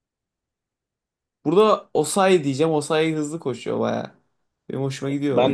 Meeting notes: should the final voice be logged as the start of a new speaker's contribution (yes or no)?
yes